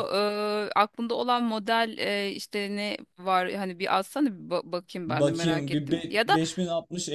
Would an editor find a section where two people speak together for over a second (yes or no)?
yes